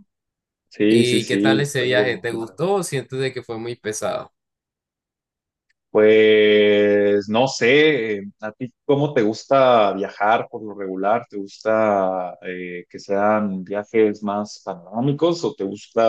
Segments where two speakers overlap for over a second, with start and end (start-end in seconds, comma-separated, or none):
0.9-2.6